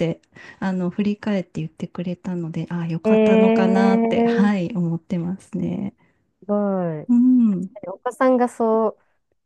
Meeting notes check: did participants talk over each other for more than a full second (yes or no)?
yes